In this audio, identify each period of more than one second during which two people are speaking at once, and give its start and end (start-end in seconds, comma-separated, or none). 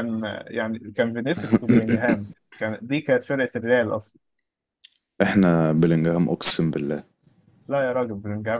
none